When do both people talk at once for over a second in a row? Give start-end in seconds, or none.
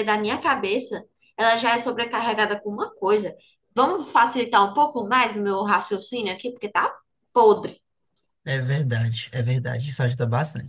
none